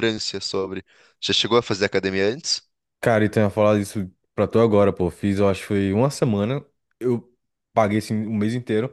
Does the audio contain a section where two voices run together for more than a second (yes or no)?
no